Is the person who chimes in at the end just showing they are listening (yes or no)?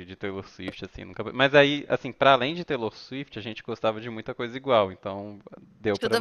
no